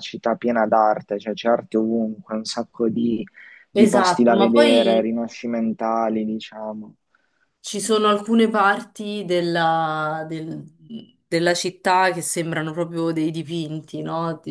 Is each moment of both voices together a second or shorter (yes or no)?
no